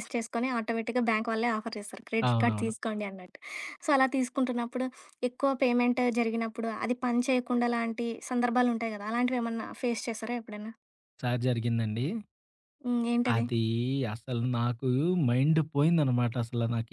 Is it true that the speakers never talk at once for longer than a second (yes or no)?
yes